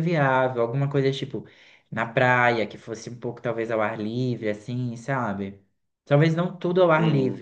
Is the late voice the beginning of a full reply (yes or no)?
no